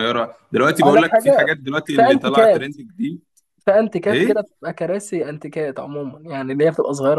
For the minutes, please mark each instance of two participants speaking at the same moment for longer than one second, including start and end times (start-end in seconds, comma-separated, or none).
0.8-2.7